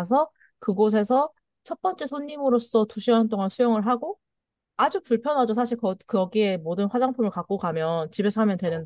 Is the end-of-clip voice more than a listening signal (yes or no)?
no